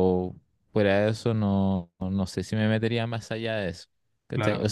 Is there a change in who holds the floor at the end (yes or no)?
no